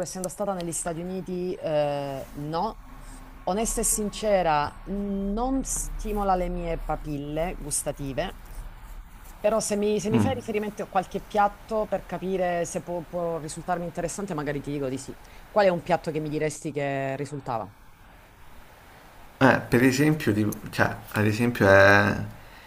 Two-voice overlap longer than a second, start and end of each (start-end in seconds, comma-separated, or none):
none